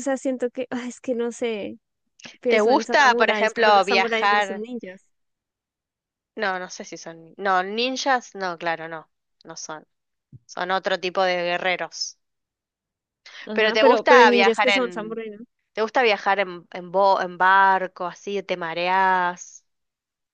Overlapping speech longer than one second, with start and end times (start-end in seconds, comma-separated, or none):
2.5-4.6, 13.5-15.2